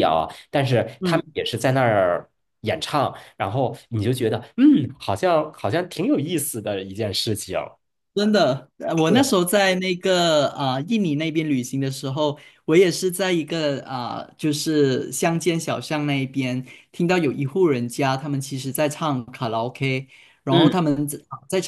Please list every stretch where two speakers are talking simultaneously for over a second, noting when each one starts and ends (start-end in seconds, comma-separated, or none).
none